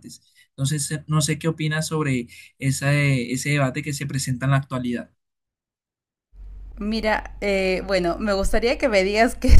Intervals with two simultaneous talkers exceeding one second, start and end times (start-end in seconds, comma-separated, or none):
none